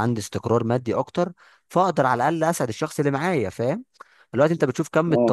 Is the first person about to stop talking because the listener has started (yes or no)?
no